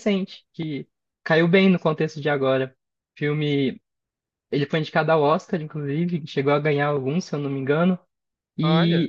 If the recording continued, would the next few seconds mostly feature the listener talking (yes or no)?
no